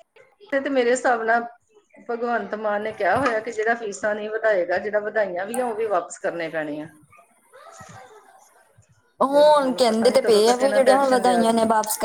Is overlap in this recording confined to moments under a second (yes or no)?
no